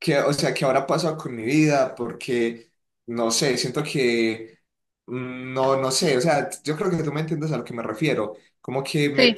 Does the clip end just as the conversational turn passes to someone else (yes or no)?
no